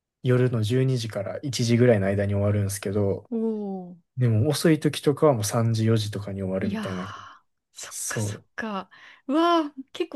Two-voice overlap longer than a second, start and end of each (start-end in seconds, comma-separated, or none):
none